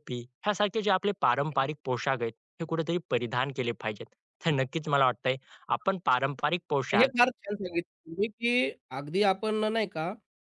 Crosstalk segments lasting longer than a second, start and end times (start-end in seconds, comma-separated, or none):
none